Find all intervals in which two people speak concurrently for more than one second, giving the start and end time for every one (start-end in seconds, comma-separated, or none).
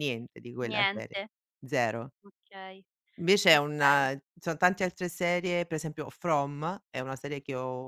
none